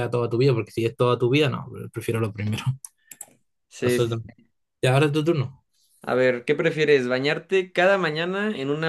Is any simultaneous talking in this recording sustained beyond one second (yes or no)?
no